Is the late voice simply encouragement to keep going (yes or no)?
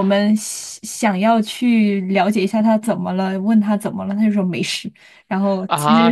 no